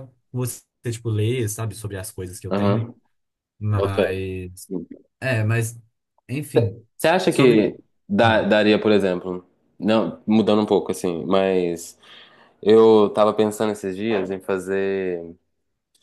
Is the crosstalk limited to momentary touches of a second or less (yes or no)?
yes